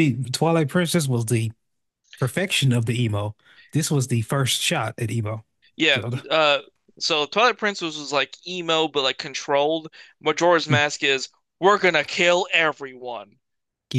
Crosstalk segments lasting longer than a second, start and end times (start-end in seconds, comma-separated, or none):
none